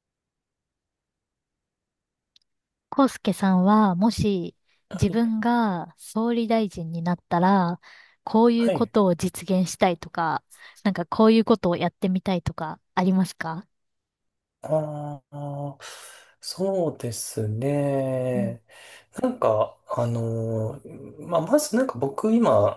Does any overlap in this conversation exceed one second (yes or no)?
no